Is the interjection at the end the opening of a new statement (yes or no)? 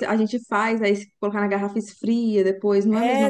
yes